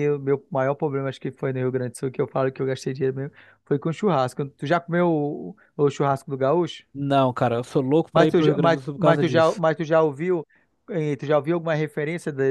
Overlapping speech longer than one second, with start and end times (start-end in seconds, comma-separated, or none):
8.1-9.6